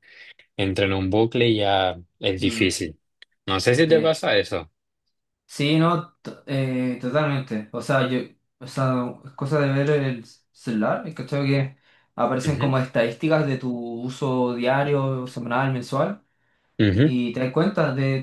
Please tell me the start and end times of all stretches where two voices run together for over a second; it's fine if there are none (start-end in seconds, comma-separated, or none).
none